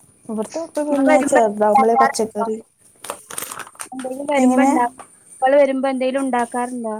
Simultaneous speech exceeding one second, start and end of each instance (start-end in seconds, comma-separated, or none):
1.1-2.5